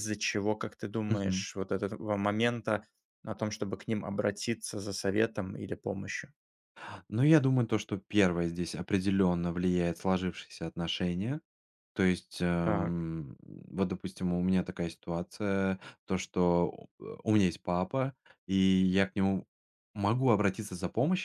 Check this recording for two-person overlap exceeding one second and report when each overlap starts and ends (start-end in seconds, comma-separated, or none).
none